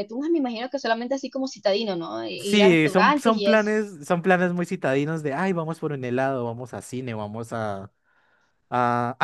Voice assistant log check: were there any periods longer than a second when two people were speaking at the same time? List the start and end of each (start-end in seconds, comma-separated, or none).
2.4-3.7